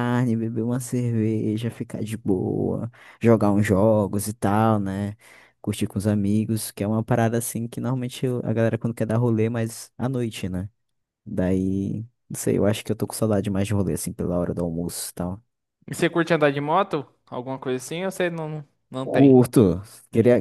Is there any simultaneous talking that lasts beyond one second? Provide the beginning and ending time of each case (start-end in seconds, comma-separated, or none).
none